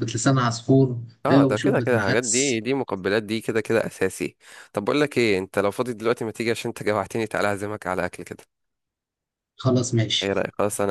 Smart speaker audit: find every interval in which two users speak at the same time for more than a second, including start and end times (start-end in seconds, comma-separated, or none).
1.3-2.6